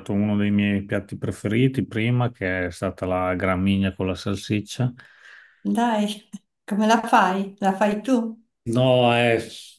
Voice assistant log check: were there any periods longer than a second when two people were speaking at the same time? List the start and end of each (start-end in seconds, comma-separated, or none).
none